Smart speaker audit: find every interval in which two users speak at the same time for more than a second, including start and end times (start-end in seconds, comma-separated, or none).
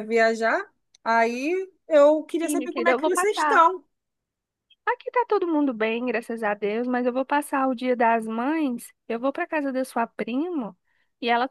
2.4-3.7